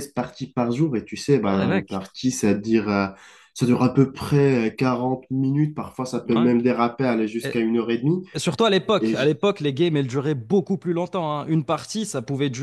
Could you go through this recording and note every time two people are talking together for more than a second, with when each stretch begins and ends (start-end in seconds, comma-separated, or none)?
none